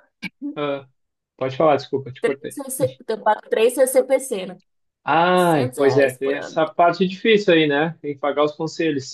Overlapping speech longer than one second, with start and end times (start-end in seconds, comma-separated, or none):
5.3-6.6